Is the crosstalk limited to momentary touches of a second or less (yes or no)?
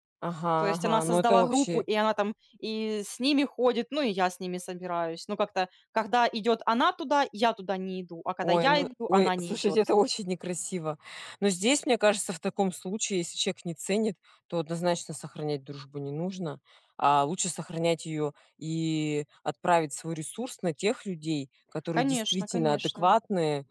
no